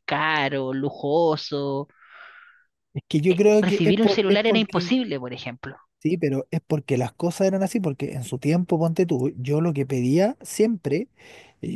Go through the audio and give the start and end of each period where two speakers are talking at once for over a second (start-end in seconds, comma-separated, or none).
3.6-5.0